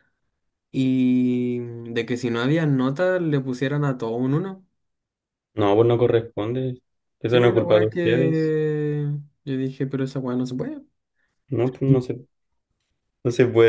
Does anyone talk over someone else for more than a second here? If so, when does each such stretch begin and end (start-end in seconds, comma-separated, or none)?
7.3-8.5